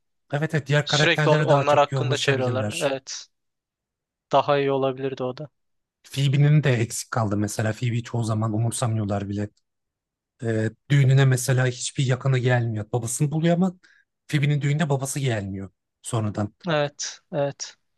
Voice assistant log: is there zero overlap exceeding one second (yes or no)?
no